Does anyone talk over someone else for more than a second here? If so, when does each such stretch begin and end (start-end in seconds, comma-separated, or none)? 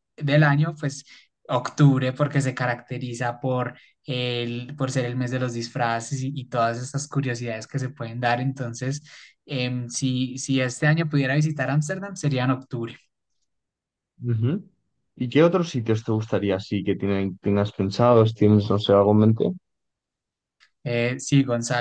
none